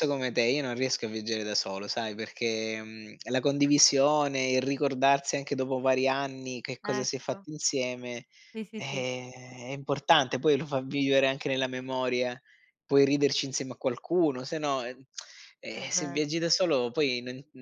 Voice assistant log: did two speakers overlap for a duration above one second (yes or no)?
no